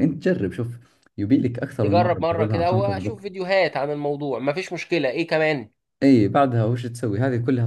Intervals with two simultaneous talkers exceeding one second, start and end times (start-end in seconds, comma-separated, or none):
1.8-3.2